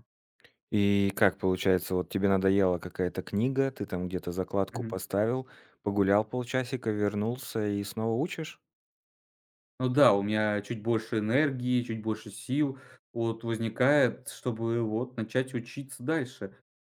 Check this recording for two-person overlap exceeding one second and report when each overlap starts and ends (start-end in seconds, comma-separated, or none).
none